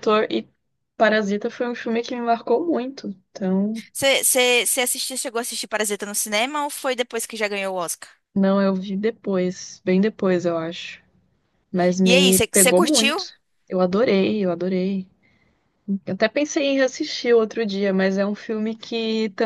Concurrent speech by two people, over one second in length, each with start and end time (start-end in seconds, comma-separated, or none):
12.0-13.3